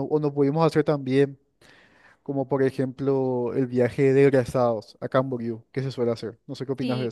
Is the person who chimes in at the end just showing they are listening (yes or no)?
no